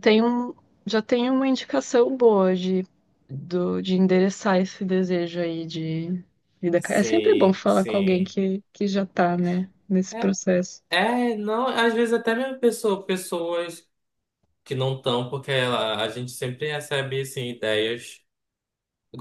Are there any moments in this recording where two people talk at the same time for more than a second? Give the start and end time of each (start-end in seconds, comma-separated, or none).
6.8-8.4